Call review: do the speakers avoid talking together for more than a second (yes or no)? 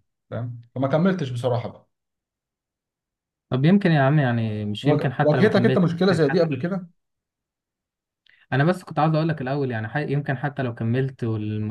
no